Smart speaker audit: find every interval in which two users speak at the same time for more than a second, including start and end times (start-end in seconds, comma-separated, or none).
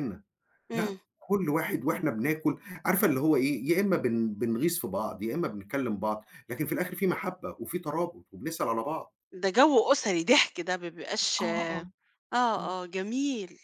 none